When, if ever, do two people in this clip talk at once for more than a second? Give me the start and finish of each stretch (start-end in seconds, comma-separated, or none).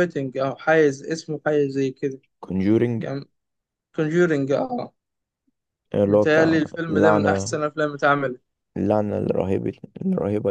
6.0-7.6